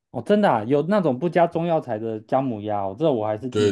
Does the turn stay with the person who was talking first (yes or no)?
no